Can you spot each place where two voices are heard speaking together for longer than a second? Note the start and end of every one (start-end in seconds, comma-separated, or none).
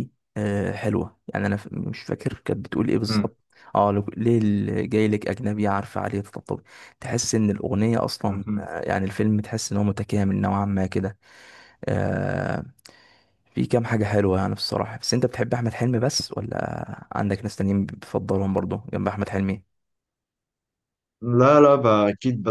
none